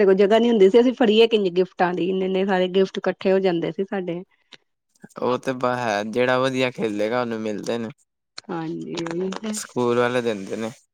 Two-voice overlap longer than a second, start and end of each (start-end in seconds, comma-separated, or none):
none